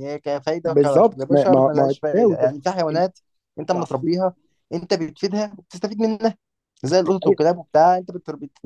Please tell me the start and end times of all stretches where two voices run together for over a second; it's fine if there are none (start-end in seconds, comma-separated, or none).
0.7-2.5